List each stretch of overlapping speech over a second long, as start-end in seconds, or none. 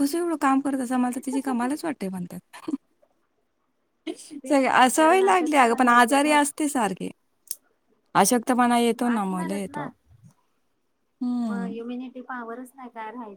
4.5-6.4